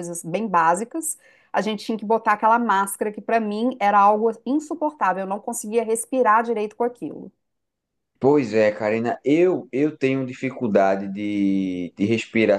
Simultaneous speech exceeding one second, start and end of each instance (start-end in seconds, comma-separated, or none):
none